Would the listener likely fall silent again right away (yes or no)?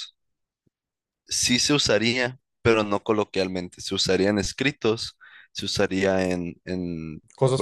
yes